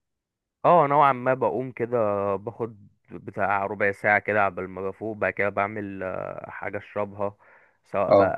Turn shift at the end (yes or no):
no